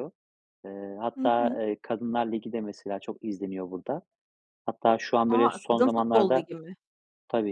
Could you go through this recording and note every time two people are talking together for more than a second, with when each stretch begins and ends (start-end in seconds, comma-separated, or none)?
5.3-6.5